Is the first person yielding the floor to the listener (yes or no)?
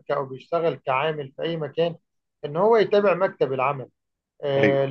no